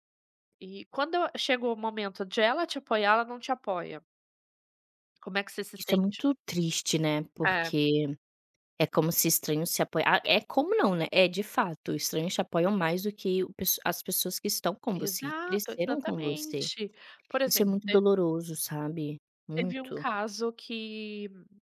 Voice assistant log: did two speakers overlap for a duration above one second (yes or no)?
yes